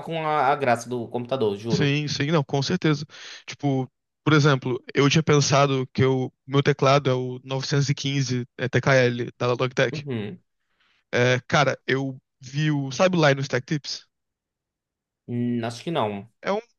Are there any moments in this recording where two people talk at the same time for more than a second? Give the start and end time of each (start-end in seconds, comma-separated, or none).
none